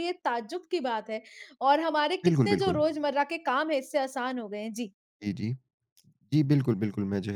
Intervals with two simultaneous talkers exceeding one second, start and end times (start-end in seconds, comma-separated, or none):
none